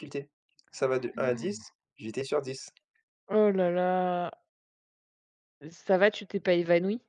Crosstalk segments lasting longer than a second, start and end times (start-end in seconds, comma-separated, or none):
none